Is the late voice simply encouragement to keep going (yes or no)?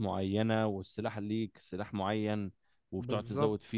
yes